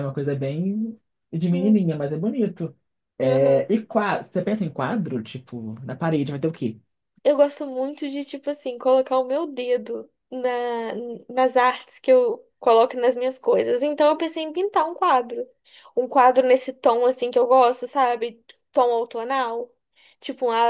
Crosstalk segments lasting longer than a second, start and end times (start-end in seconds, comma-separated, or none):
none